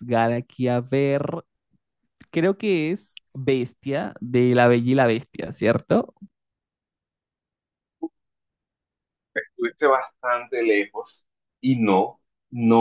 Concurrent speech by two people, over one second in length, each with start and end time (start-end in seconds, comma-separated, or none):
none